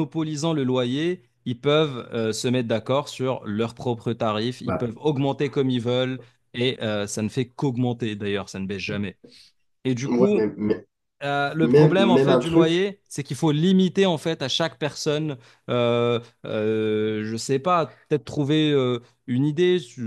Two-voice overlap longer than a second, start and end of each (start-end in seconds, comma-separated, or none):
11.6-12.9